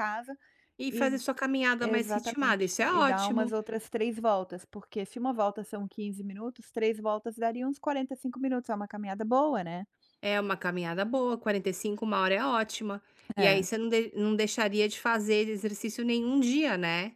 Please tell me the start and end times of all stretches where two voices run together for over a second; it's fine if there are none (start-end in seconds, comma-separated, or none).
1.8-3.5